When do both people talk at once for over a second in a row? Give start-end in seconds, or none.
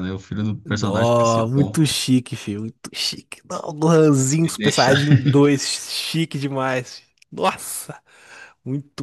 0.6-1.9